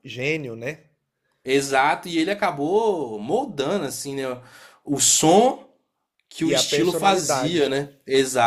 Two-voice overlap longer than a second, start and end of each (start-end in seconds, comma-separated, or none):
6.4-7.7